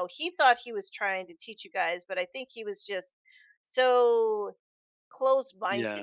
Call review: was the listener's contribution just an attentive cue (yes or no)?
yes